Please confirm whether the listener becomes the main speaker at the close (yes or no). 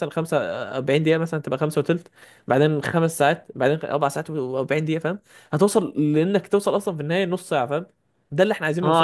yes